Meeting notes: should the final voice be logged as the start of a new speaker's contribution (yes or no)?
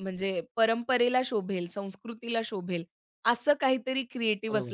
no